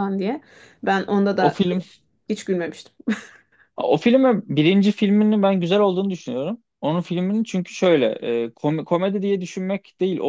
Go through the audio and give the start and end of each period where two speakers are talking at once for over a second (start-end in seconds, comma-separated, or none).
none